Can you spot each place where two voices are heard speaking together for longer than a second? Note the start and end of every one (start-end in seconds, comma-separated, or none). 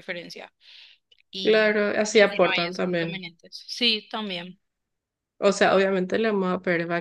1.4-3.2